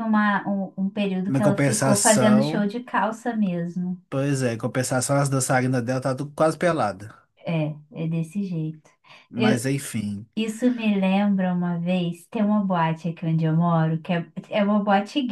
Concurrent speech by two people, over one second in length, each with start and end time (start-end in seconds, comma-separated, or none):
1.3-2.7